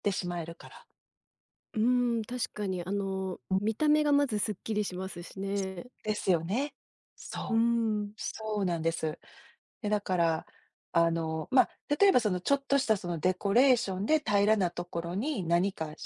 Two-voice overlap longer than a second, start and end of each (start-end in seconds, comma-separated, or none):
none